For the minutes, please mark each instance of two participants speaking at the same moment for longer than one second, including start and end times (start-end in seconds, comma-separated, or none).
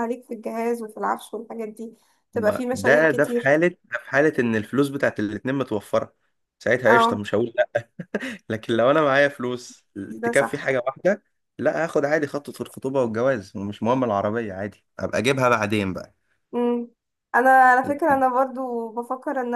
2.3-3.6